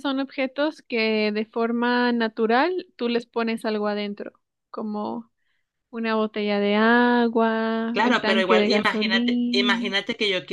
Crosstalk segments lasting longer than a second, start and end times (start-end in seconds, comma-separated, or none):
7.9-9.9